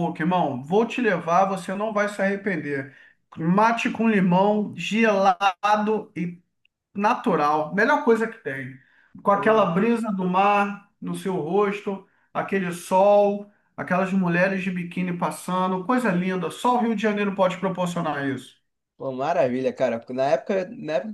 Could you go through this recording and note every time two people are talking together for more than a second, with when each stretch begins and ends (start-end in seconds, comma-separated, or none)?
none